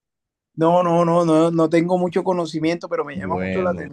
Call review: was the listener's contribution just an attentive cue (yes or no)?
yes